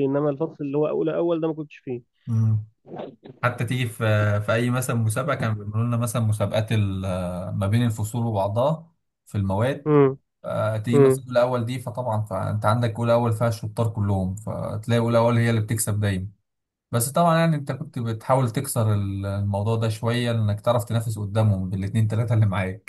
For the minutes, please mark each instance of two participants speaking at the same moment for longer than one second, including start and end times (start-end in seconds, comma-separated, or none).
none